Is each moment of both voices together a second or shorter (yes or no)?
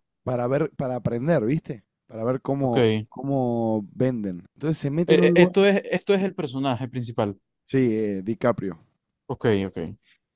yes